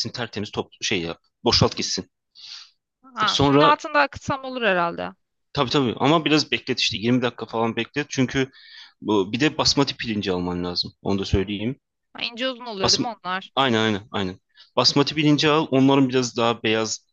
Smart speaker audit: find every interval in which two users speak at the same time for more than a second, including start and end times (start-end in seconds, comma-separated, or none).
none